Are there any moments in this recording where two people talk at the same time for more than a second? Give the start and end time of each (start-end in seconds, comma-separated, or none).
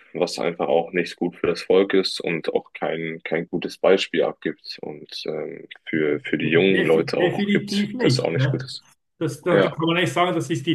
6.4-8.7